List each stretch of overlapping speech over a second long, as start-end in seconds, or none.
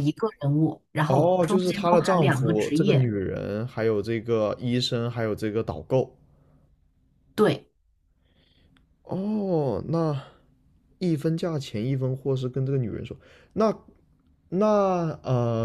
1.1-3.1